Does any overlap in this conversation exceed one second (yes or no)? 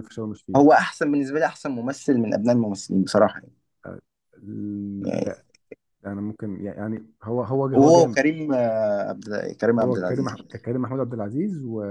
no